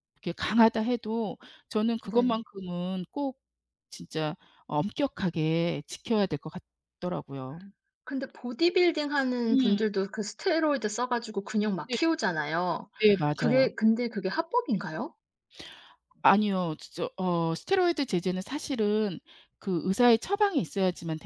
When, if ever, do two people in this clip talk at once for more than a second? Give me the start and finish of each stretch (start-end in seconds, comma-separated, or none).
none